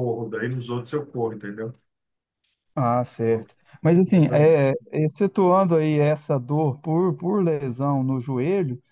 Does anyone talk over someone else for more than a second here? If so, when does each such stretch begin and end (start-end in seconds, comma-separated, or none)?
none